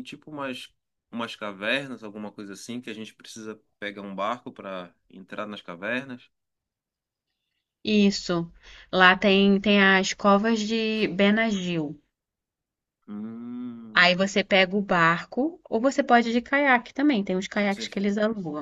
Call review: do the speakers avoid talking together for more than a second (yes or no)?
yes